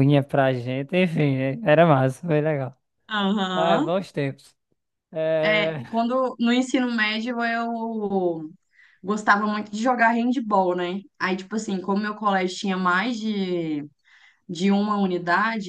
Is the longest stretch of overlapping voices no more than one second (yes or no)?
yes